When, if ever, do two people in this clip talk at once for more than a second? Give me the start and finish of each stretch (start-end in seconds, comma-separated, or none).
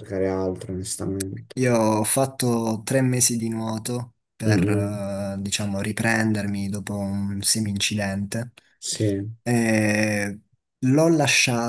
none